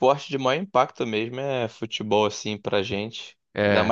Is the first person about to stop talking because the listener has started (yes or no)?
no